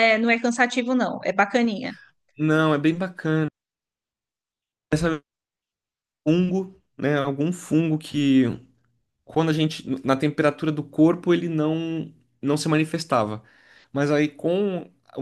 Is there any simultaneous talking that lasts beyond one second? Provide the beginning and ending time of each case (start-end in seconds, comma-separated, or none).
none